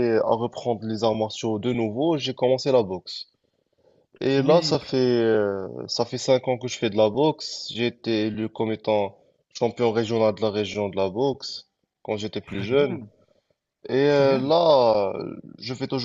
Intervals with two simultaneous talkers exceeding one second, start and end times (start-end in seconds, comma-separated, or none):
none